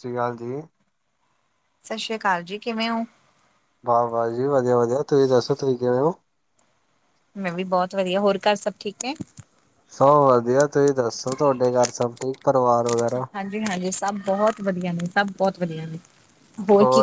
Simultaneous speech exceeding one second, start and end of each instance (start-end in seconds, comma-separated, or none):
none